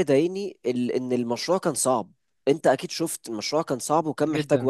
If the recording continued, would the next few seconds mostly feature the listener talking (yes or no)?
yes